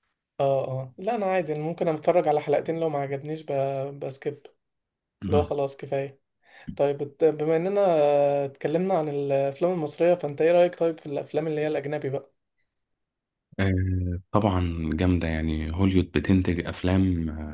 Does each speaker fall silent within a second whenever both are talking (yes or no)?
yes